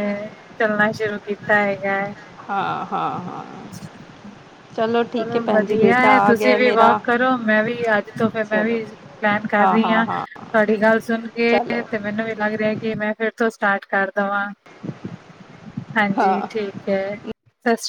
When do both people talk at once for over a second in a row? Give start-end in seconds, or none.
none